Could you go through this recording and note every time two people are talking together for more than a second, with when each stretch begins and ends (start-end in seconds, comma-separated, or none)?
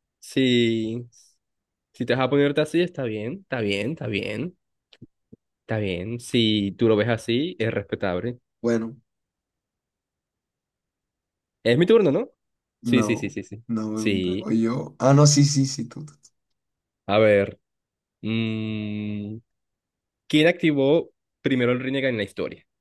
12.8-14.5